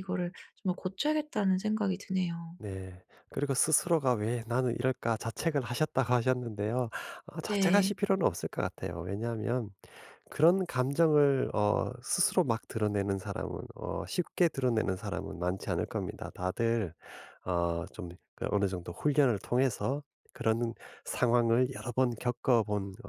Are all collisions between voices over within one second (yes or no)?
yes